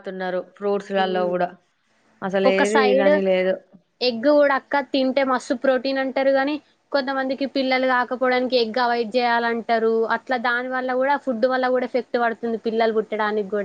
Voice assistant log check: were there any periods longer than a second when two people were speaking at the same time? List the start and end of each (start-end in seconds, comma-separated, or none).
none